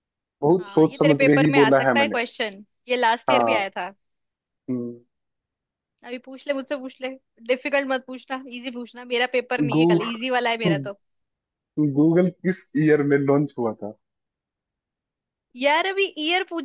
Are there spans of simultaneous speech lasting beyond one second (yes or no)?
yes